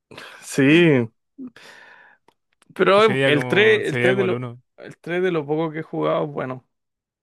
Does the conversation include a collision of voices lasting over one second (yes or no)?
yes